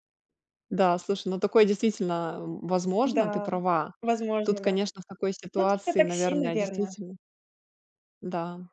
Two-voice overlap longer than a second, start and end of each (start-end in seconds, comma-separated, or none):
5.6-6.9